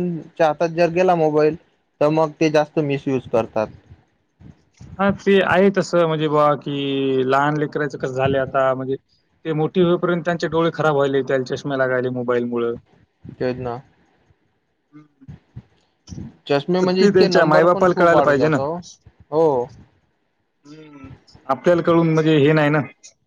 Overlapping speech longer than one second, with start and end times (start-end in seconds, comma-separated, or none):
16.8-18.6